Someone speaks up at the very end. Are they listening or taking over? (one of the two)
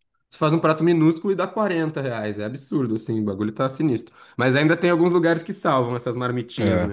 taking over